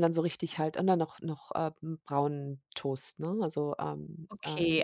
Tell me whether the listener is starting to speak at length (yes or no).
yes